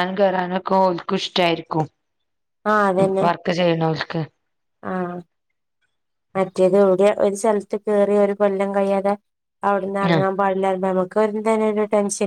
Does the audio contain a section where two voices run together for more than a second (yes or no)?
no